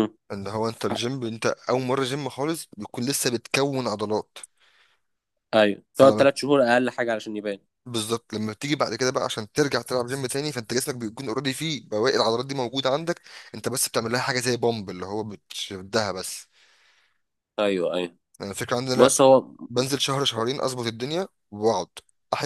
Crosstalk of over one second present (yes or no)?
no